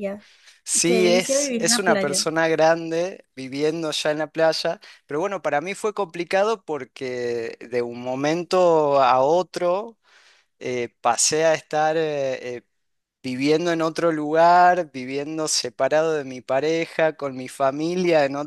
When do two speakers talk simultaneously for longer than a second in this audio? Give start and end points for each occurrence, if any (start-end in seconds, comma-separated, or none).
0.8-2.2